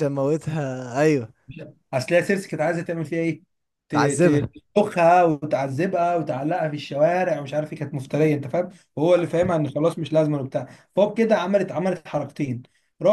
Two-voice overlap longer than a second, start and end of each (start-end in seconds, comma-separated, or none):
none